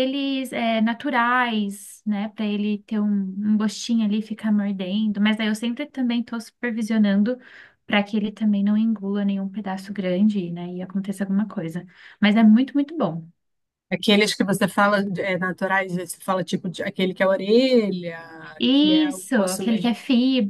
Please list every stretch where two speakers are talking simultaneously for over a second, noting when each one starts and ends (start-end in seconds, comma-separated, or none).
18.7-19.9